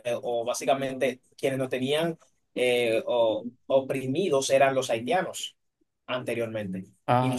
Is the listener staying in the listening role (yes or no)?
yes